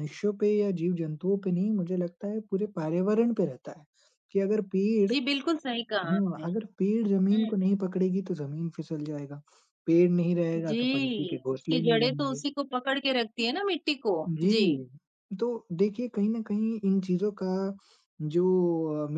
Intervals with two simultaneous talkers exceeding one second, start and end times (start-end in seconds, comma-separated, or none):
10.6-12.4